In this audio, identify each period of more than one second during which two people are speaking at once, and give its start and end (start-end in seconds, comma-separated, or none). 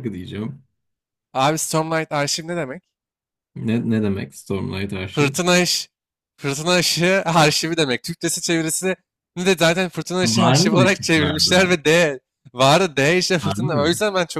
10.2-11.8